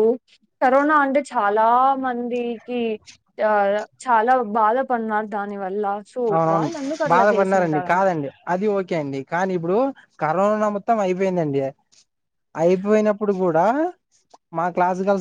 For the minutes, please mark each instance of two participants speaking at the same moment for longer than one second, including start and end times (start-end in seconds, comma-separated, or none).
none